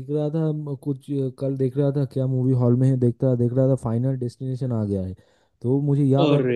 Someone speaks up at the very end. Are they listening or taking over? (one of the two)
listening